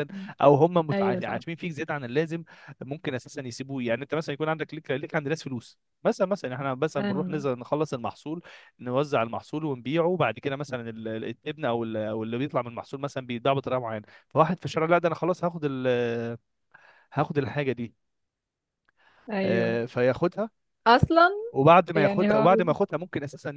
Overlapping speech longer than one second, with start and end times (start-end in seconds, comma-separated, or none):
none